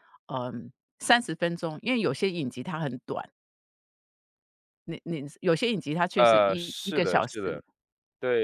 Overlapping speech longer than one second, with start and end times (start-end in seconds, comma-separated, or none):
6.2-7.4